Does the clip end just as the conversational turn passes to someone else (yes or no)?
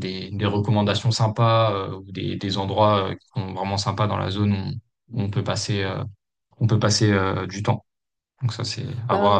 yes